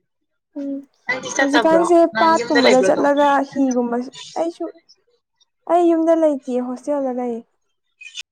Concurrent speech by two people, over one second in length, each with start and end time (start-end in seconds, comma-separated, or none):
1.4-3.1